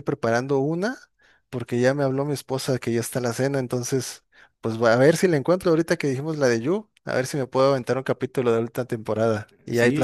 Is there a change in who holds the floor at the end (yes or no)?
yes